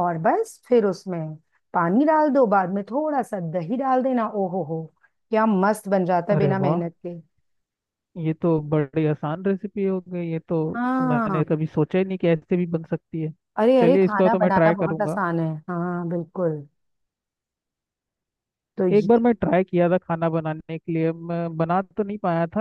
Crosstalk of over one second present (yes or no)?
yes